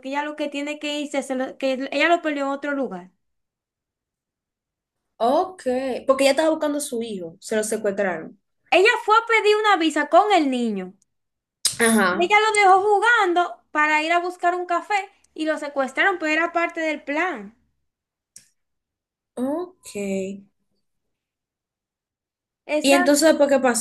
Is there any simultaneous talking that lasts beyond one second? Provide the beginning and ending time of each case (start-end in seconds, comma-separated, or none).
none